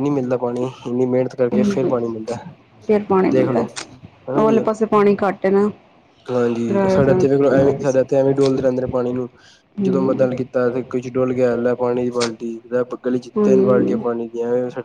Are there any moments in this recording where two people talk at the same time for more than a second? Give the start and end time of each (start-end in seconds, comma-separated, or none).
6.7-8.3, 9.8-11.0